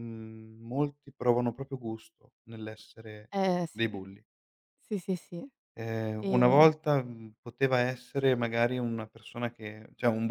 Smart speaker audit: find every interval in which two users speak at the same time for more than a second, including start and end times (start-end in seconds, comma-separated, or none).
none